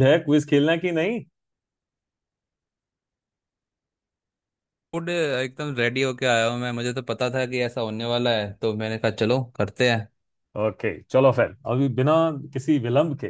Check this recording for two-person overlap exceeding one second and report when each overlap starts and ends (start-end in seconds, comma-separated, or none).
none